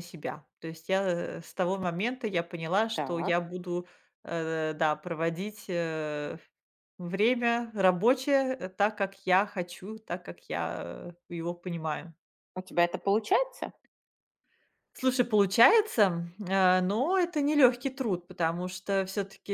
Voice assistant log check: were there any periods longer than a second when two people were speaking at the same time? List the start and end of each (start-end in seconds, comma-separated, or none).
none